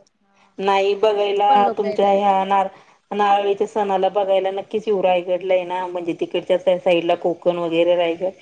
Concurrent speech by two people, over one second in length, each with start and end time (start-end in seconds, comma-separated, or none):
1.0-2.6